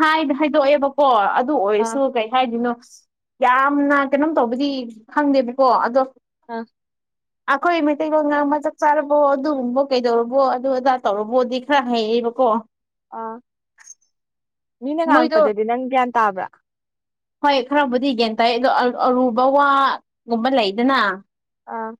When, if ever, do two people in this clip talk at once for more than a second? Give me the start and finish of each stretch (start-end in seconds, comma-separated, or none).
none